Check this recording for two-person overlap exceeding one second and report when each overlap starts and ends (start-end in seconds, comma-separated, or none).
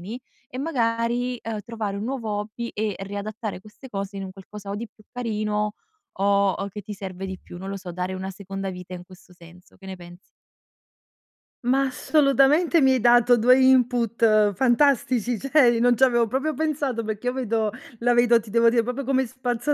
none